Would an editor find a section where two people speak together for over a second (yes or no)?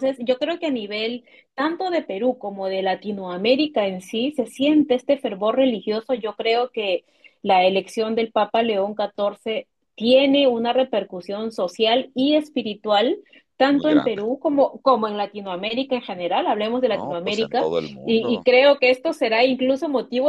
yes